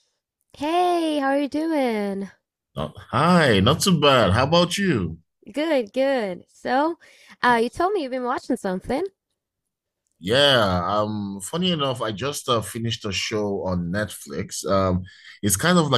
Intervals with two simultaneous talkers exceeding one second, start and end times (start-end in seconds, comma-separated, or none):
none